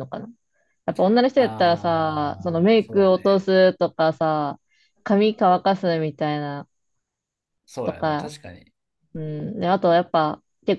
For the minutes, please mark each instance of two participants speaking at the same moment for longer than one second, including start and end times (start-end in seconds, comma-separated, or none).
1.4-3.5